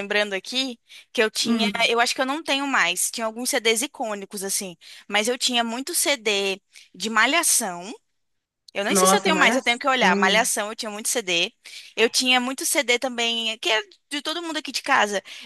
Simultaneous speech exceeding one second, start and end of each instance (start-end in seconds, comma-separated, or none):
8.9-10.5